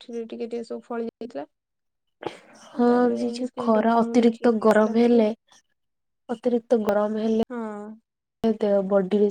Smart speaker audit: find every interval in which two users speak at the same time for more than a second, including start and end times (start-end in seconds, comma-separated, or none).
3.4-5.2